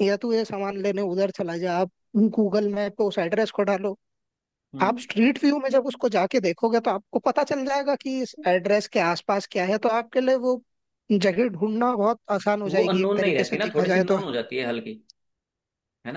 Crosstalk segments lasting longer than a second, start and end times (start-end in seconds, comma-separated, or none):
12.7-14.2